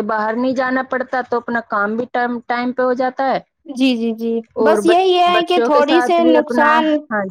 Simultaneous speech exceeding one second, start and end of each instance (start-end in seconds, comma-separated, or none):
4.7-6.7